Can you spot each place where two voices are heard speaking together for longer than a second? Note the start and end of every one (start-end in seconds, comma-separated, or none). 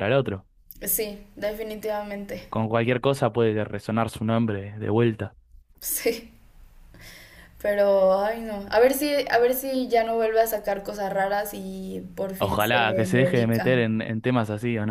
12.4-13.8